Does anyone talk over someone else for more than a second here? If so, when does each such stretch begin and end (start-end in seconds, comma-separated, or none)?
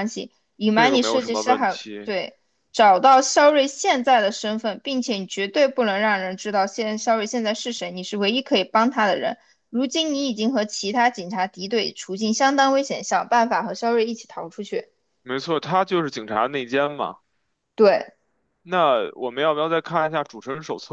0.7-2.1